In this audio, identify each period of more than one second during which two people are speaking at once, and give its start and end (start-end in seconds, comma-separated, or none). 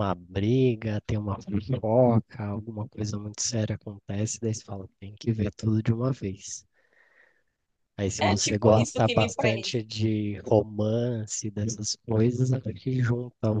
8.2-9.8